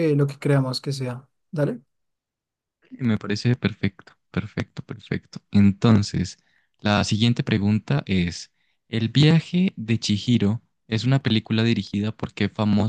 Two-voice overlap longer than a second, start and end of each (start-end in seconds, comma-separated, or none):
none